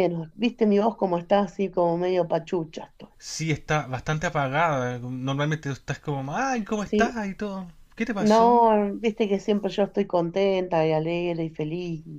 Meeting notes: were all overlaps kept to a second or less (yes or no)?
yes